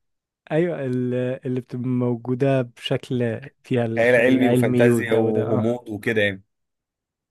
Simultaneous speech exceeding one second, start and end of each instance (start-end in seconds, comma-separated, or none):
4.0-5.7